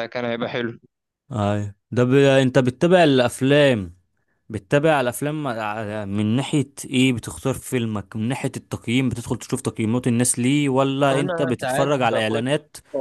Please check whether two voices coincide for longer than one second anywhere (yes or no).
yes